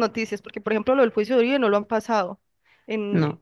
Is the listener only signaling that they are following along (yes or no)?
yes